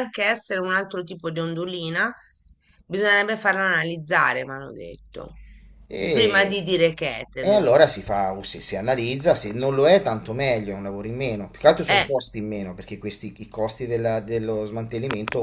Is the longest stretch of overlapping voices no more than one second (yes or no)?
yes